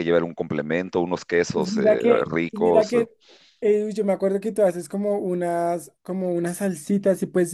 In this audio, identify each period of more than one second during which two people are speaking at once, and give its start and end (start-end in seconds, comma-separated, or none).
1.5-2.9